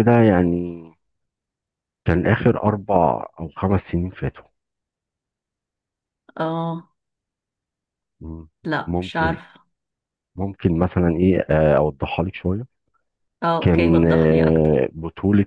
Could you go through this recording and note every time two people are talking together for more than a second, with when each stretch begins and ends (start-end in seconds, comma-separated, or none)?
13.6-14.8